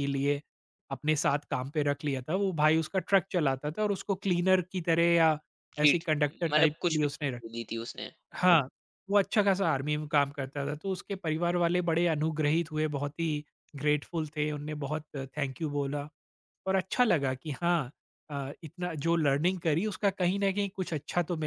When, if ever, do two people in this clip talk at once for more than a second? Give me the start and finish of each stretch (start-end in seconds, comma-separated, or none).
5.8-7.4